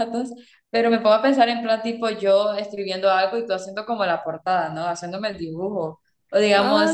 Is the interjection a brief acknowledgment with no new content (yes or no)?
yes